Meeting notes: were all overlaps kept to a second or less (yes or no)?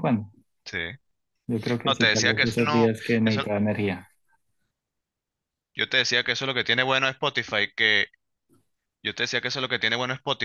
no